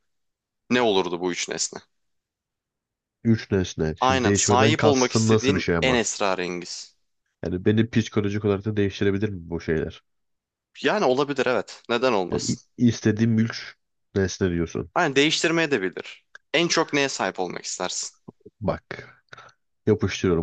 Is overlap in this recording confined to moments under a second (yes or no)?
no